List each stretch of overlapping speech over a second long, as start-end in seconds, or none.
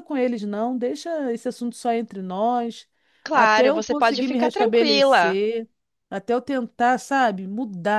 3.3-5.4